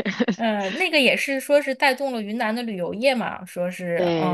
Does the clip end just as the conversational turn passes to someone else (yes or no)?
yes